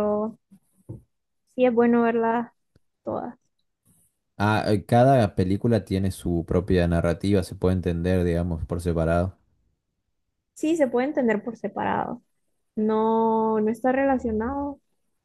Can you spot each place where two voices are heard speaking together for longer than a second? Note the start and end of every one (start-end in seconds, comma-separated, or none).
none